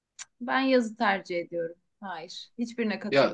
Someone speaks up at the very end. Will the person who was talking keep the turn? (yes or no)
no